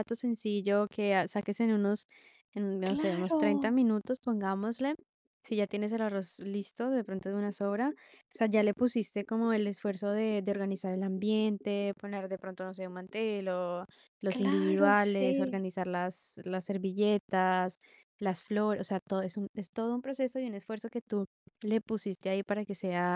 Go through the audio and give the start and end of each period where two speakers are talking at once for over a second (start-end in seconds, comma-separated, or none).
14.3-15.6